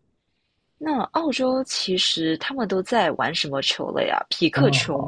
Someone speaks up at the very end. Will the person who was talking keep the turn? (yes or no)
no